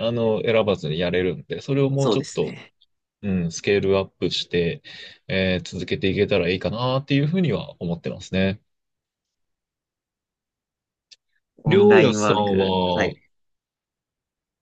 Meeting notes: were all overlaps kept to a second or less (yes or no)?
no